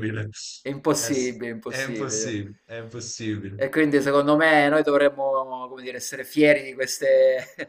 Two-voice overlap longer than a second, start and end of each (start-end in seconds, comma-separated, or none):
0.9-2.4